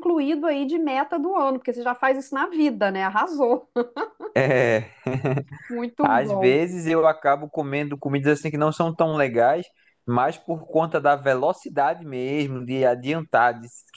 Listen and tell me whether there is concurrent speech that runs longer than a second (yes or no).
no